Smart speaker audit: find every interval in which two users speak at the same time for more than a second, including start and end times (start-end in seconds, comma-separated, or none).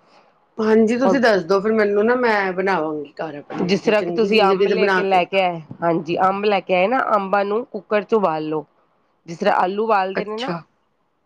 3.7-5.2